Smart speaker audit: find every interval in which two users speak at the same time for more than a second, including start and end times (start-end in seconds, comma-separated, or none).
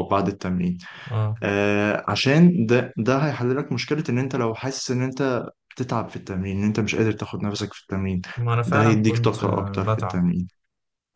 8.7-10.3